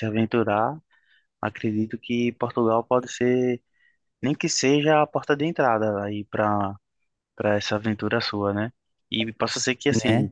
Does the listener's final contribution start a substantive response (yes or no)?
no